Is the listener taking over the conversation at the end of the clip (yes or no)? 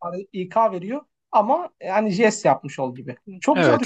yes